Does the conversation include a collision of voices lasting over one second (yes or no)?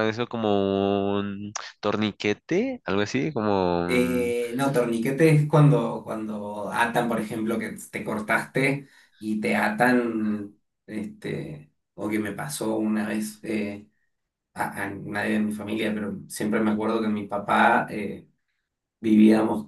no